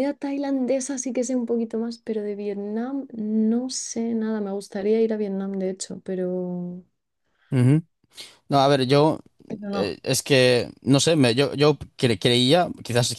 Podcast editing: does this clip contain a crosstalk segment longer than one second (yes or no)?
no